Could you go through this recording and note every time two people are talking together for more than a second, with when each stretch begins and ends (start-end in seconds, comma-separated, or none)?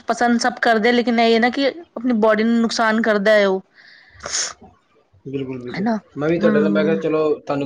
none